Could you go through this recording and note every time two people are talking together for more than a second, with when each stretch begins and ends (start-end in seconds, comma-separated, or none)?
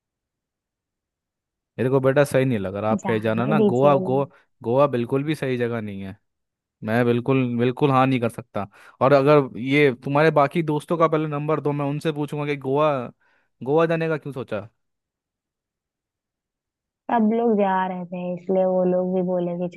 3.0-4.2